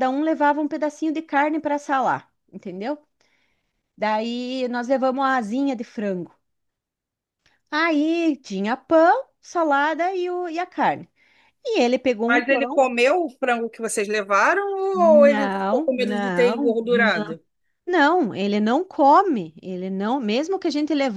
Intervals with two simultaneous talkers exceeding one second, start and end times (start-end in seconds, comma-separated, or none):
15.0-17.1